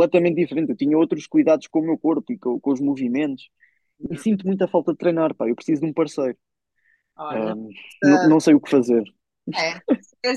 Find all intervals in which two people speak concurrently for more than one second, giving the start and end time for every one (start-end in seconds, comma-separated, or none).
none